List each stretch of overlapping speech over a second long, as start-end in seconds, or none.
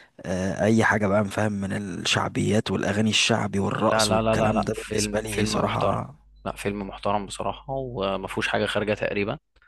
3.9-6.0